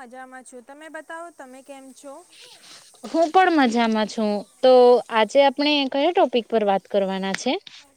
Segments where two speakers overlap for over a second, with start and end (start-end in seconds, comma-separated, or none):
none